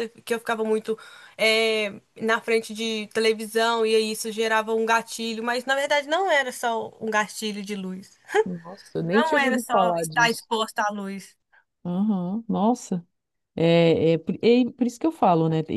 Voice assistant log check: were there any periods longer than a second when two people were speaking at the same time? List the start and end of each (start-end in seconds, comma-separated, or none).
9.1-10.5